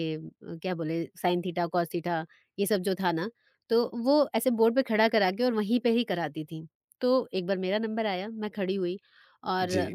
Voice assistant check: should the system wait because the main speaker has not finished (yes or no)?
yes